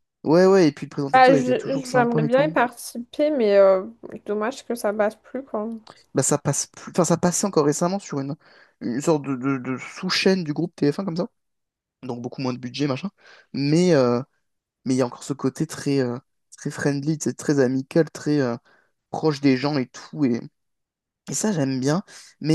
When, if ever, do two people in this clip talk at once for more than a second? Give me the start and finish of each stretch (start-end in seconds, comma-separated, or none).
1.1-2.5